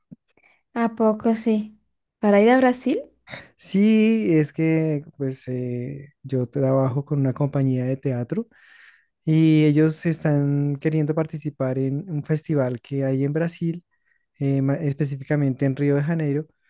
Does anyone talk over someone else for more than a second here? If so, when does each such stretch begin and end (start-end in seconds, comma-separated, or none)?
none